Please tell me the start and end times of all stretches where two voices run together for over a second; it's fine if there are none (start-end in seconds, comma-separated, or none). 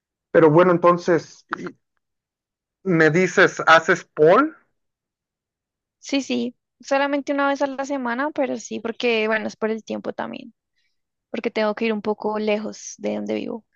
none